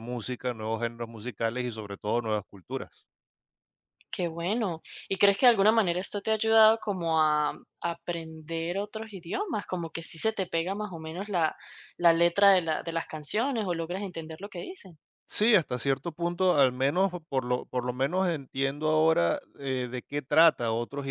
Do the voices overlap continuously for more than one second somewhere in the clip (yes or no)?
no